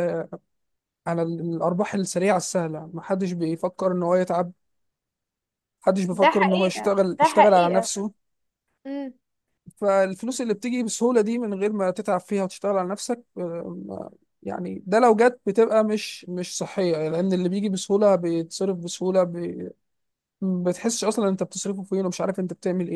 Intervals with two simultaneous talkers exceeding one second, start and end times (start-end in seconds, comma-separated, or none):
6.1-7.9